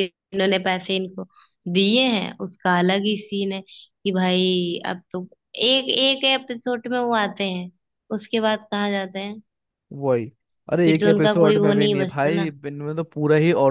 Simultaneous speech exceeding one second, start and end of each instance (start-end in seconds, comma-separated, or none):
10.8-12.5